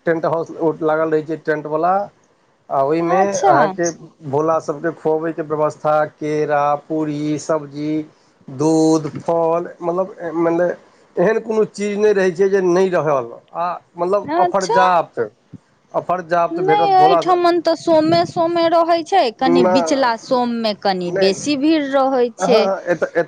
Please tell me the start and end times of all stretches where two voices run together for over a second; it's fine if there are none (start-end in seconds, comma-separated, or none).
none